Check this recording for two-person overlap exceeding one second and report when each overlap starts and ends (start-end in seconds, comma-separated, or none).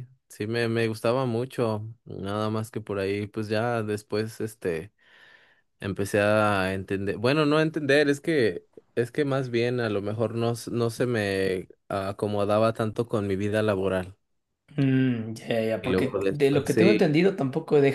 15.8-17.0